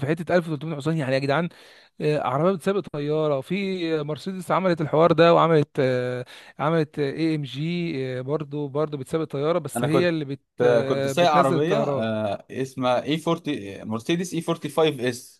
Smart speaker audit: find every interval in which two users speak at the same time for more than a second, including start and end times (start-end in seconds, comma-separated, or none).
10.9-12.1